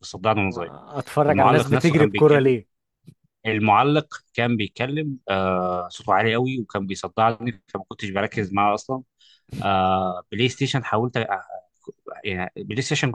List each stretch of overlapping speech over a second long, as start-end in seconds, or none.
1.3-2.5